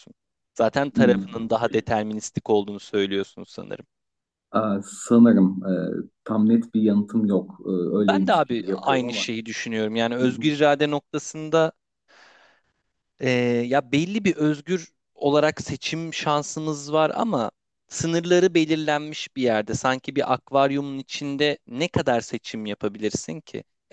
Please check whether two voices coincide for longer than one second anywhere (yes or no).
yes